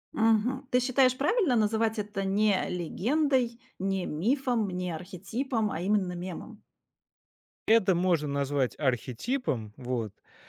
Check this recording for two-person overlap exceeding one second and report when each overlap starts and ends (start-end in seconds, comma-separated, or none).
none